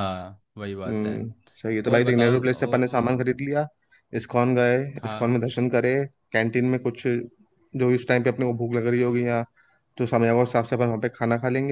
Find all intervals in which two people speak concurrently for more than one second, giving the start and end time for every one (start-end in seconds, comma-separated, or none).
1.9-3.1